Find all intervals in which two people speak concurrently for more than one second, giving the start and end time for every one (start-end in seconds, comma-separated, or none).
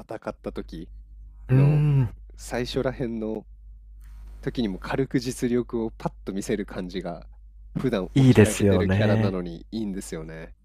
8.2-9.4